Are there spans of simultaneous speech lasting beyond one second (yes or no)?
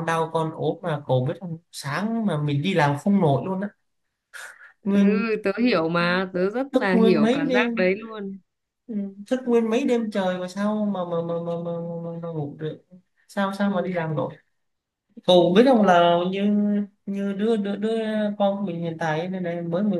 yes